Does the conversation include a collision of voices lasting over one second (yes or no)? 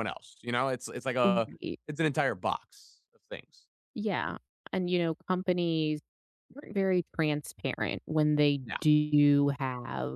no